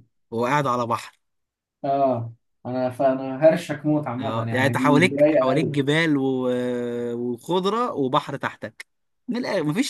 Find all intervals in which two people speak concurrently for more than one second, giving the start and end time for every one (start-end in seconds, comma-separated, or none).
4.2-5.8